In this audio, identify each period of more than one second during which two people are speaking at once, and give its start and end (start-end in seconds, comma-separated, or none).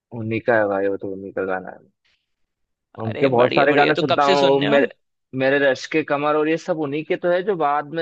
3.0-4.9